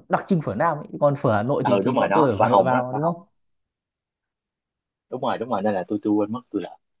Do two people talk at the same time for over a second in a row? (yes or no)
yes